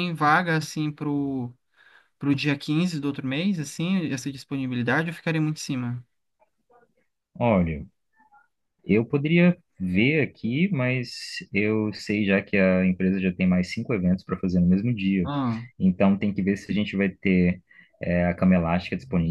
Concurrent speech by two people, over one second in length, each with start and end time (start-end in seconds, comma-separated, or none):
none